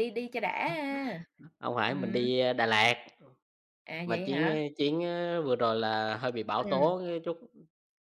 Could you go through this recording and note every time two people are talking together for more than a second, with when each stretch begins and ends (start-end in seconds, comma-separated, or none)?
none